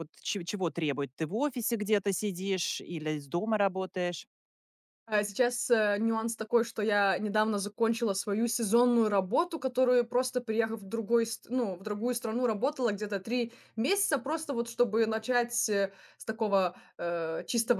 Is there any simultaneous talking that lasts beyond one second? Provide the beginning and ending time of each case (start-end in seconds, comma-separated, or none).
none